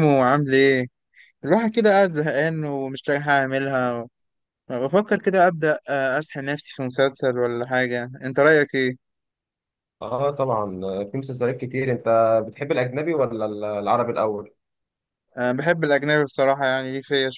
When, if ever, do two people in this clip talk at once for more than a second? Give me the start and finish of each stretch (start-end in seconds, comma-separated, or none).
none